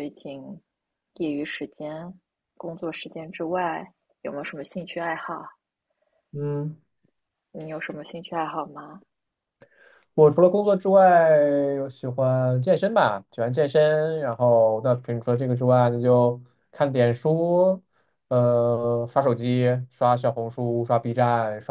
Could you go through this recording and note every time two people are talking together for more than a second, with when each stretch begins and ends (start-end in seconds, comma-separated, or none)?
none